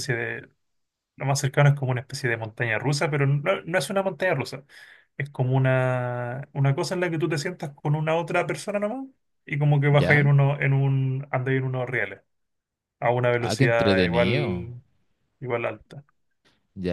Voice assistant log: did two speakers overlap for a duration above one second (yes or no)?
yes